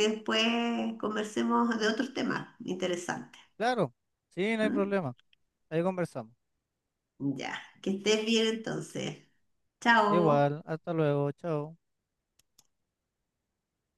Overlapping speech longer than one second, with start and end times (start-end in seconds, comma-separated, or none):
none